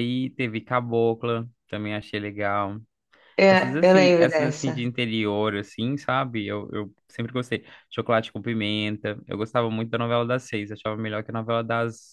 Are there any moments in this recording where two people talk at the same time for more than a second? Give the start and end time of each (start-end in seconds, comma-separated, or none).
3.5-4.9